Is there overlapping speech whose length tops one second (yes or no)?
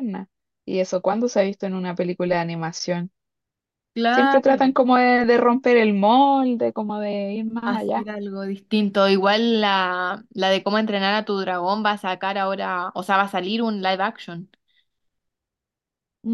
no